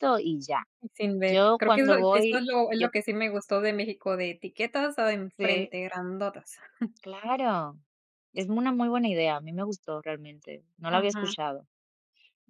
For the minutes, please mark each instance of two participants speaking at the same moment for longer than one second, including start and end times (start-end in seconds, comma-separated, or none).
1.3-2.9